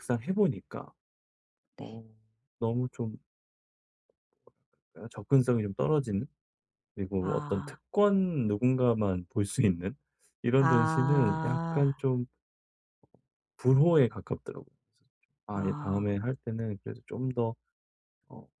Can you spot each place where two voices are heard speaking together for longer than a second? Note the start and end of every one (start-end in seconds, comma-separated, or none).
10.6-11.9